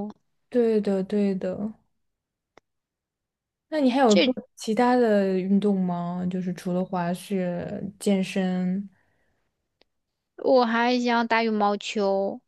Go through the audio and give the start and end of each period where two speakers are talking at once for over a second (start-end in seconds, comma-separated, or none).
none